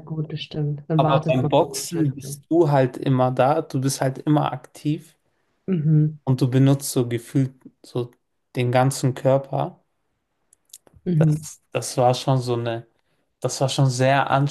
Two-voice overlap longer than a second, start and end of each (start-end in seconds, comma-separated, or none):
1.0-2.4